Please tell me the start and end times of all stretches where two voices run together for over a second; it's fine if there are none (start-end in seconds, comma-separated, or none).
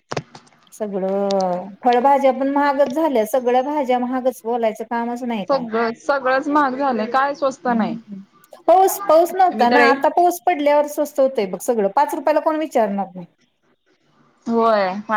none